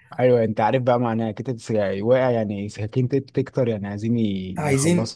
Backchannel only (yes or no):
no